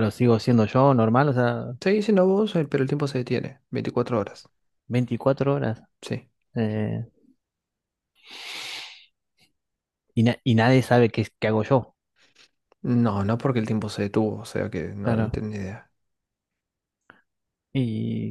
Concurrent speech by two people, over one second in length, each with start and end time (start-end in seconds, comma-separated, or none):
none